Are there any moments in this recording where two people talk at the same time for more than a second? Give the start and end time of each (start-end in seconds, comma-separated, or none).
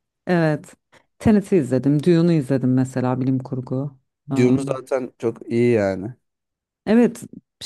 none